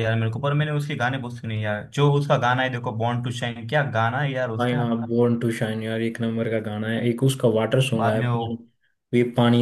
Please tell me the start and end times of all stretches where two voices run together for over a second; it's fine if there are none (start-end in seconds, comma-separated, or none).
none